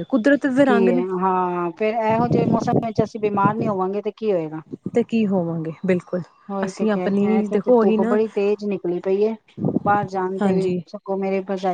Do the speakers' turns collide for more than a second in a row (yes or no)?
yes